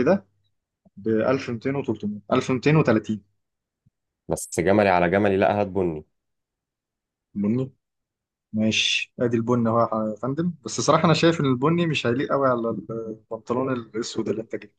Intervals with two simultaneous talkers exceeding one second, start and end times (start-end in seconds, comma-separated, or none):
none